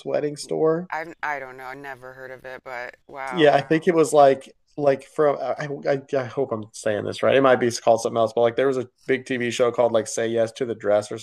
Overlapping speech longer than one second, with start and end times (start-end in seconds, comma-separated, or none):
none